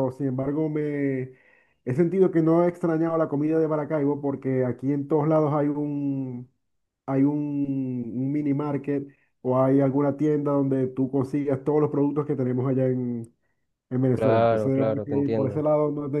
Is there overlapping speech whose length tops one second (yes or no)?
yes